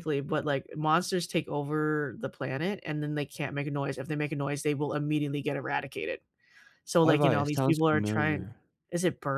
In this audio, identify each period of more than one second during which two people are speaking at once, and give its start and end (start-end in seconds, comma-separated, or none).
7.0-8.5